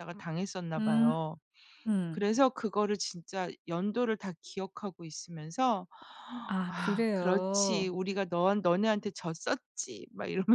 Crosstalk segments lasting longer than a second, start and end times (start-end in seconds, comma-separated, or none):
6.7-7.9